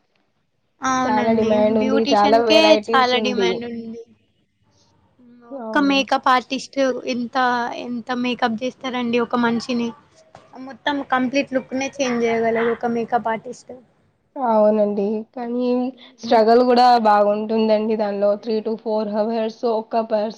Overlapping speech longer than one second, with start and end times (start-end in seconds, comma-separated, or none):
1.1-3.1